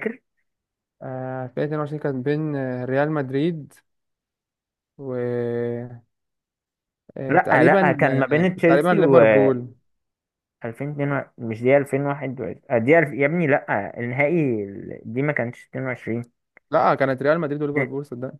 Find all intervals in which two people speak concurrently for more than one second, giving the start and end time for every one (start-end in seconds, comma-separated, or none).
7.3-8.9